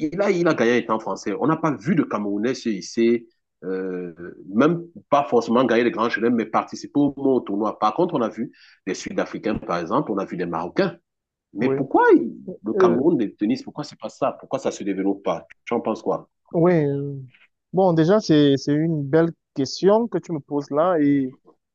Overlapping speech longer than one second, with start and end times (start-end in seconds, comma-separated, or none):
none